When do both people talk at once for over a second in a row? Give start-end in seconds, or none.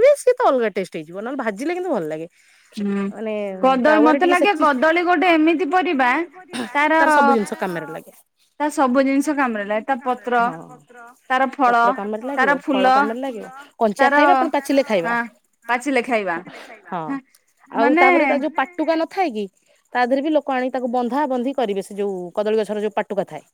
3.9-6.1